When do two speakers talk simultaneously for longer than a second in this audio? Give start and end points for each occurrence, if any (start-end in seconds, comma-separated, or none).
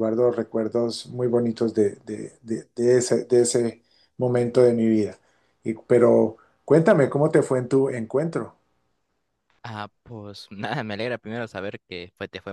none